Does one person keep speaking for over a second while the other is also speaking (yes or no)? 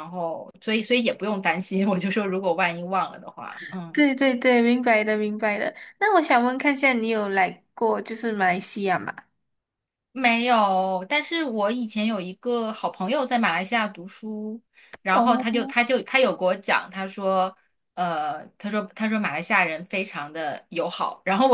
no